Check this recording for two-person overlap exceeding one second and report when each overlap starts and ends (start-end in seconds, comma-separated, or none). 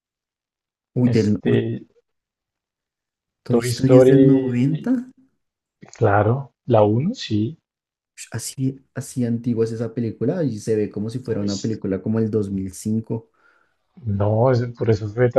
3.5-4.9